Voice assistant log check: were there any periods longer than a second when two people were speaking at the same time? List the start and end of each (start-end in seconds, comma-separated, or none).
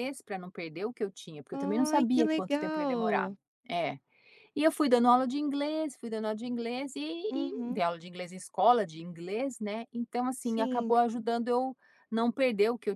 1.5-3.3